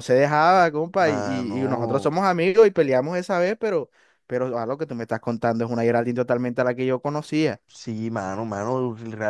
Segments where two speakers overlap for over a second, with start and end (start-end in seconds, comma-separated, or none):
1.0-2.2